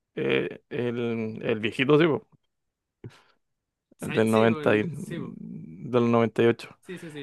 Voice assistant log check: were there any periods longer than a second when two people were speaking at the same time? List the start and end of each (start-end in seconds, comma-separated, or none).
4.0-5.4